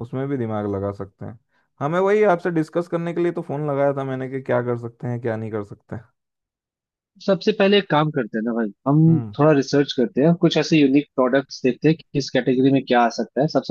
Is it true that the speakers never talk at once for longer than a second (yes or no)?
yes